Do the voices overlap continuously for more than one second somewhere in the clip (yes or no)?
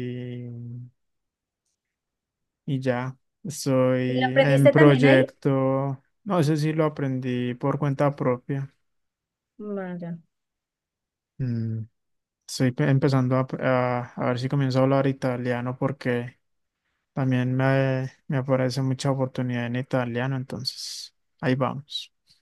yes